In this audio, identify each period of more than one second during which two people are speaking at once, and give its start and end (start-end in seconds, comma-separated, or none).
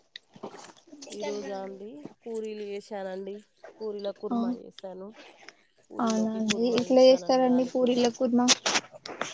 6.0-8.1